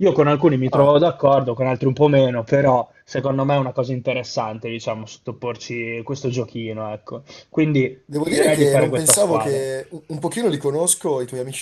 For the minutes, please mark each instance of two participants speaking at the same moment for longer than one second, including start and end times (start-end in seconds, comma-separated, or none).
8.1-9.7